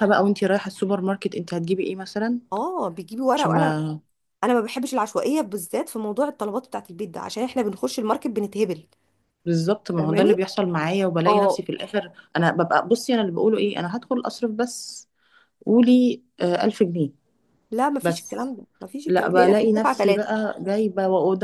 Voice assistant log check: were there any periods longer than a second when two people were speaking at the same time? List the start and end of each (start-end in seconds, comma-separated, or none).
19.1-20.3